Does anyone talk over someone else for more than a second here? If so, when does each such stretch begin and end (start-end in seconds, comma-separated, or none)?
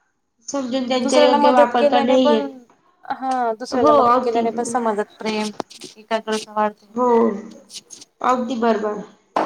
1.0-2.5